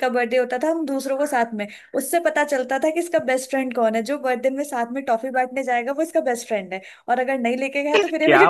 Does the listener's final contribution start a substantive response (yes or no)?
yes